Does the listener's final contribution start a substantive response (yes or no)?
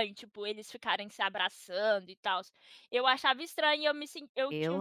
no